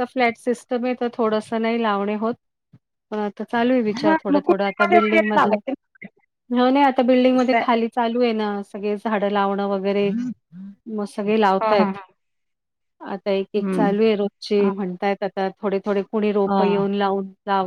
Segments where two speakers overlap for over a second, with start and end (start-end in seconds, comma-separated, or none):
4.0-5.6